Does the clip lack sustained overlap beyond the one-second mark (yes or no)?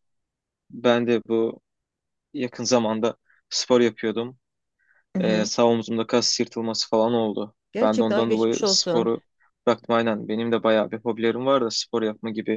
no